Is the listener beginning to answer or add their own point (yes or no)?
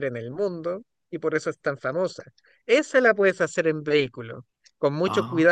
no